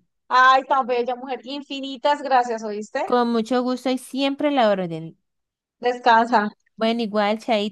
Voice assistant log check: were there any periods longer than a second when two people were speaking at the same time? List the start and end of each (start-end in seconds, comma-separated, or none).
none